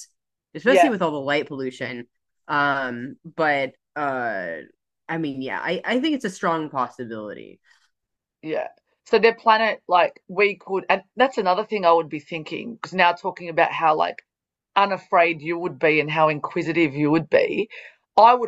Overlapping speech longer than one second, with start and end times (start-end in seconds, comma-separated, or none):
none